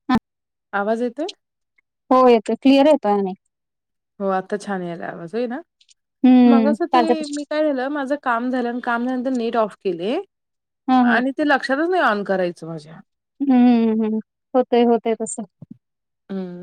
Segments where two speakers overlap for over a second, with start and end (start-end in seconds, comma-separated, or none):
none